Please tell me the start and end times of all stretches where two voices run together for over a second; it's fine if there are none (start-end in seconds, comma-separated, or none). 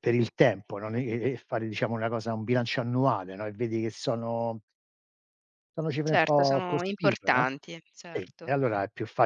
6.1-7.5